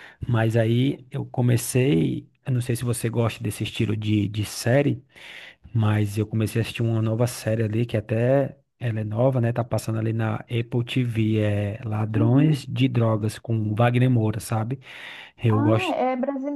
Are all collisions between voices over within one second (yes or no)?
yes